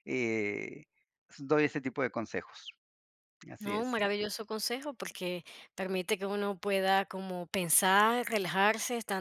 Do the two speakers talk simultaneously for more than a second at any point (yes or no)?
no